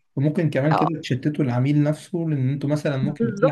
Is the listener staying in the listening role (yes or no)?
no